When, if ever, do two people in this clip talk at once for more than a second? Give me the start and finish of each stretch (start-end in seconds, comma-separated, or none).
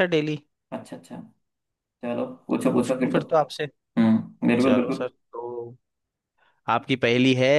none